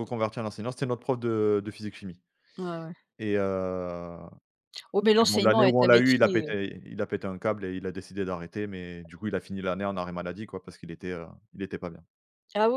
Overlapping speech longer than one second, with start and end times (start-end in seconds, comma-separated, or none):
5.2-6.5